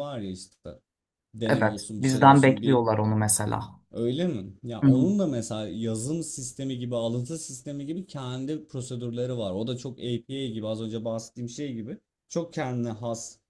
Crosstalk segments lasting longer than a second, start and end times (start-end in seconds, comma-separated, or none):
1.4-2.9